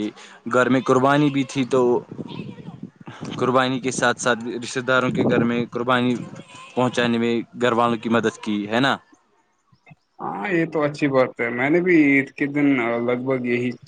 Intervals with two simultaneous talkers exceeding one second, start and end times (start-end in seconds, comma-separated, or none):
none